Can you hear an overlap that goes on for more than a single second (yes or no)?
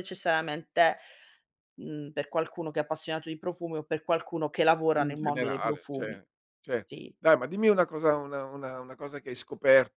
yes